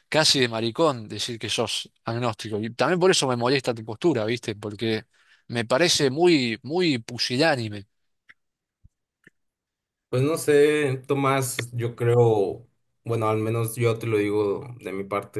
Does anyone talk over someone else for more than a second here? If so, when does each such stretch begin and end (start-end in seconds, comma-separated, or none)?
none